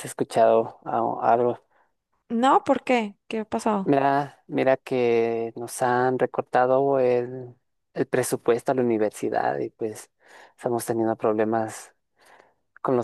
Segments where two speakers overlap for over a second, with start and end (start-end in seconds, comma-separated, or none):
none